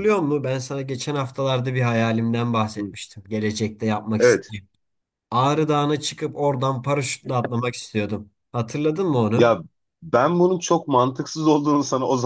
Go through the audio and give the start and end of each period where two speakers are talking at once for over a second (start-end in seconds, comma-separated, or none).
none